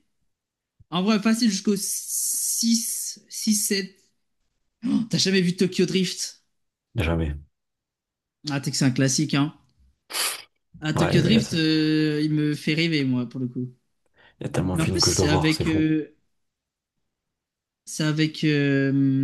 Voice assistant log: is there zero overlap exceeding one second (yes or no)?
no